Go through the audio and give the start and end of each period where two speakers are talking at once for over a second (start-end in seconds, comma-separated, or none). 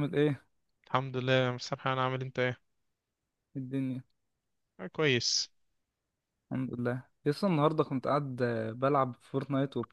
none